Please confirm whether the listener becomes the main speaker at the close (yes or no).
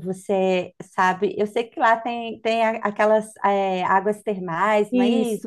yes